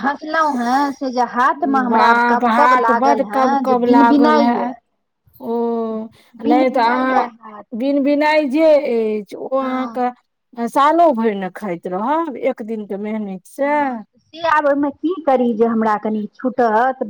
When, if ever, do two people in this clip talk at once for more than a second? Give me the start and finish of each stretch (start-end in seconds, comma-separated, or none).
1.9-4.7